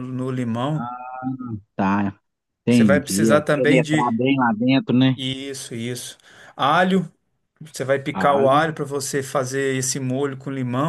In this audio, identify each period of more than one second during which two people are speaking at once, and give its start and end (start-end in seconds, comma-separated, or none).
2.7-4.2